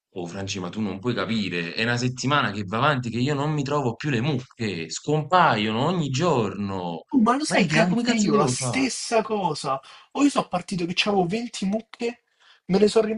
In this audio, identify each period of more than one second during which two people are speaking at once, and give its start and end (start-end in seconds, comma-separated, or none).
7.5-8.9